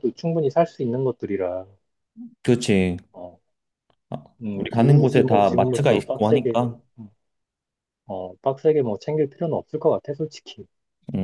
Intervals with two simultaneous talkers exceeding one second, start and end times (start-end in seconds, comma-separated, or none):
4.6-6.6